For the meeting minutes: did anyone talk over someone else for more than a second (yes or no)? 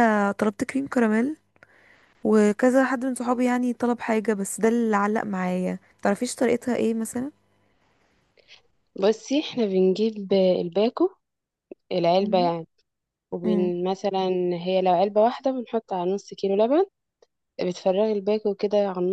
no